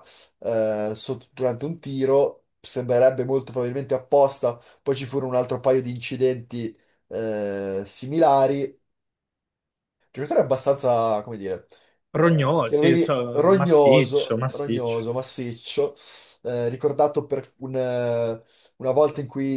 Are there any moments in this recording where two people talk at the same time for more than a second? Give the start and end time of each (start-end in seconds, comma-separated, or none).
12.1-15.1